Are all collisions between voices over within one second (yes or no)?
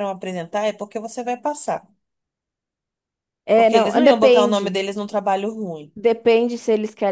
no